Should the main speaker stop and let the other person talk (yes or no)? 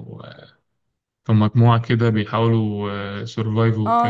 yes